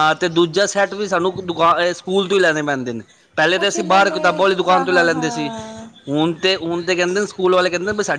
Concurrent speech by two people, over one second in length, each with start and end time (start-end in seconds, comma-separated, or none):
3.5-5.5